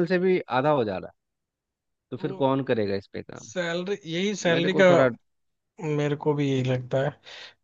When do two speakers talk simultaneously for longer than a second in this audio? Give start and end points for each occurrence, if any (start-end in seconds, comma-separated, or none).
none